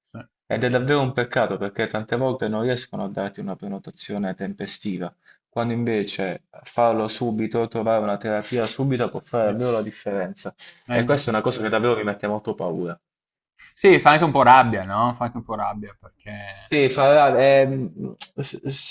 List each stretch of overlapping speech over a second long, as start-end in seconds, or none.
none